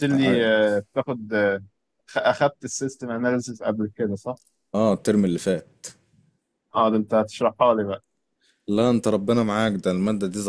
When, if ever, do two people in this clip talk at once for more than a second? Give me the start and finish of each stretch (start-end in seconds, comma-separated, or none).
none